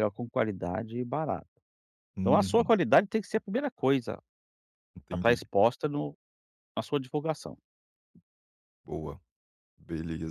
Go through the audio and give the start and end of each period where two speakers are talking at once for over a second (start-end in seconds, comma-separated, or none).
none